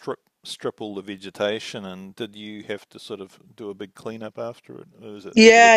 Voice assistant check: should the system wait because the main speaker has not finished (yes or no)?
no